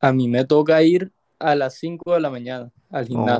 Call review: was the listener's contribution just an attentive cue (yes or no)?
no